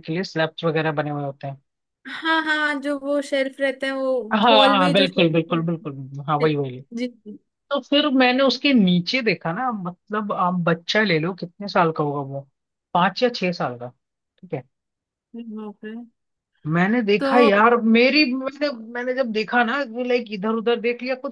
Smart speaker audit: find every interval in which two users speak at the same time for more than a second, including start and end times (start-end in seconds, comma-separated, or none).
4.3-6.5